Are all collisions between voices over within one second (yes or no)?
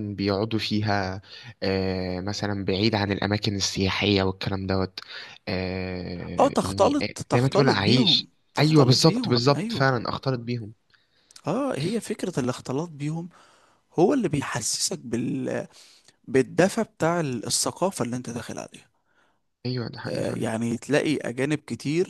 no